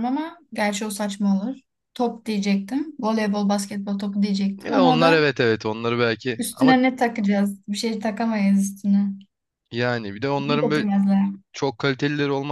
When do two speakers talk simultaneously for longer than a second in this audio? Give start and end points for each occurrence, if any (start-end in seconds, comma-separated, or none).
none